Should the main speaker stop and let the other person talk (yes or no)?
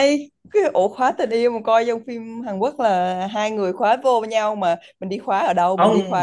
yes